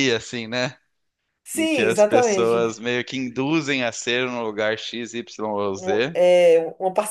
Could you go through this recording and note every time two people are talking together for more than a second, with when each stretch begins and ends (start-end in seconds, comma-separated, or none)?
1.5-2.8